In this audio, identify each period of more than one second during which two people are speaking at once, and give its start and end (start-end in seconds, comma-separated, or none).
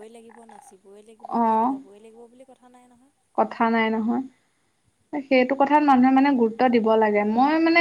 none